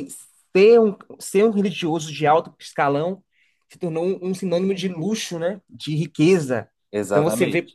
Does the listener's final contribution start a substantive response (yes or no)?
no